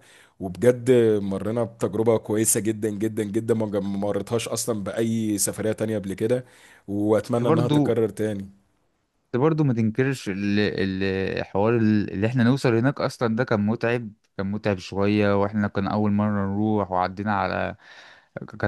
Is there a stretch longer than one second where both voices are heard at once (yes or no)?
no